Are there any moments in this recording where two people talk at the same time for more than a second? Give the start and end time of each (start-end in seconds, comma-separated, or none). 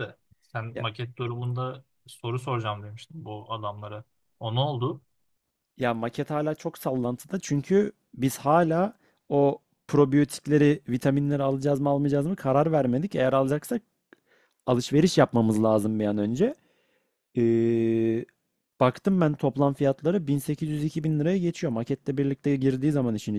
none